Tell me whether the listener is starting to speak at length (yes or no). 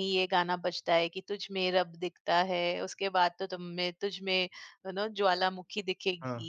yes